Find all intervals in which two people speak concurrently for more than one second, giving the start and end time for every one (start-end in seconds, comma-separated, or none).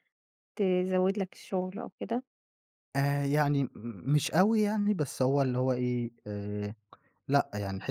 none